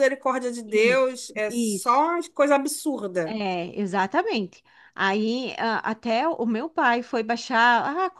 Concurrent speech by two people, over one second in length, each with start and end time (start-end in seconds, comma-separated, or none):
0.7-2.0